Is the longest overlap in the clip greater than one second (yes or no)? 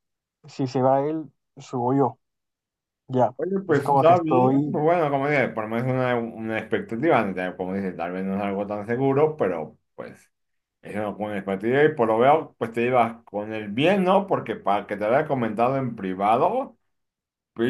yes